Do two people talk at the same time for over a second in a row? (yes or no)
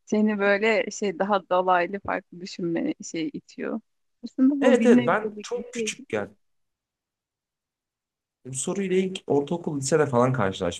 yes